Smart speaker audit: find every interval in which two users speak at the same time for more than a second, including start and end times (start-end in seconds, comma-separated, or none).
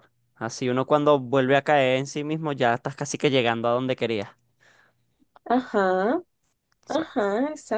none